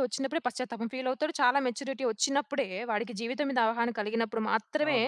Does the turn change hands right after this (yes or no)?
yes